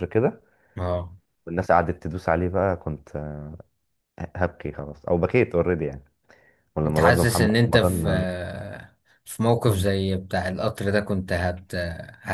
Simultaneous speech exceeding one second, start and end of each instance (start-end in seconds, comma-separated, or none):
6.9-8.1